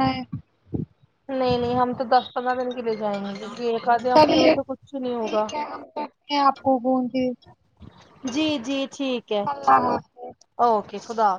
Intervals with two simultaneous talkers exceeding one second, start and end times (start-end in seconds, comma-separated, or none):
4.1-5.4